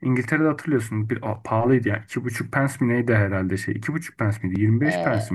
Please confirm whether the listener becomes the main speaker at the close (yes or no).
yes